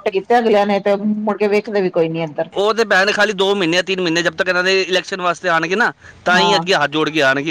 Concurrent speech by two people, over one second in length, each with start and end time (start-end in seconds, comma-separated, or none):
none